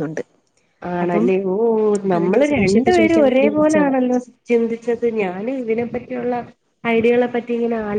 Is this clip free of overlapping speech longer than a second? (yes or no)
no